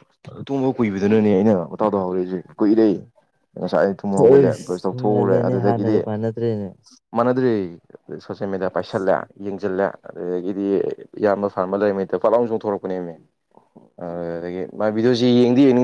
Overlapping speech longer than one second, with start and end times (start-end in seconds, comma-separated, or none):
4.3-6.0